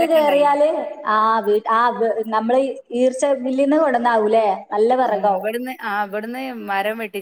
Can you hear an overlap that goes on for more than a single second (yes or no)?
no